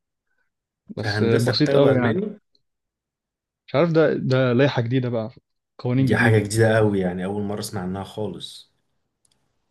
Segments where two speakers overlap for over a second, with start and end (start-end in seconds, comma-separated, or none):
1.0-2.2